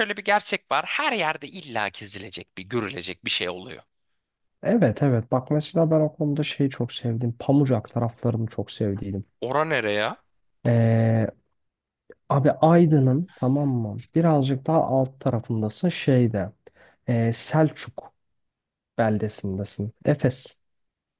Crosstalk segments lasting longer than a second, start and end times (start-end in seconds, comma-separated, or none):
none